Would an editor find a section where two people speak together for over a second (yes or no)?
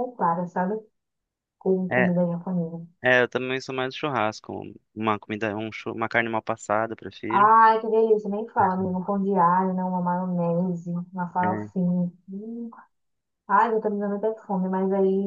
no